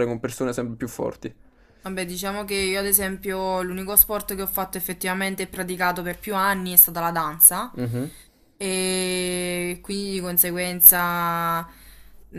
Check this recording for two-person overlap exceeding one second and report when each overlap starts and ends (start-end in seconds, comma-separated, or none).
none